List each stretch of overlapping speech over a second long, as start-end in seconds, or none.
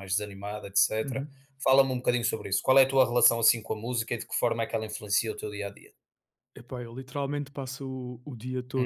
none